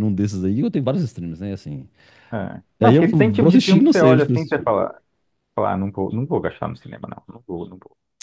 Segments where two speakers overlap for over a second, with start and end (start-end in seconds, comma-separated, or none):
2.8-4.7